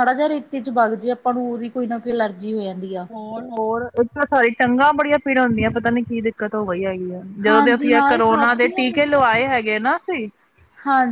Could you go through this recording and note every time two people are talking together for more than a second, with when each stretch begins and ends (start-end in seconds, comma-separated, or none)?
7.5-8.8